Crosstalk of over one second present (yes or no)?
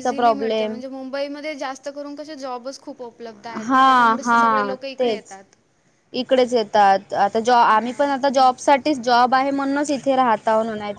yes